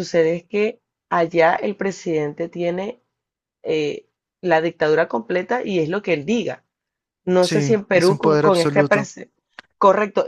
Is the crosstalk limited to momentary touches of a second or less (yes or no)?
no